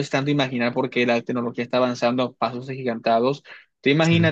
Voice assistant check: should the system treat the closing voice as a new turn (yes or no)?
no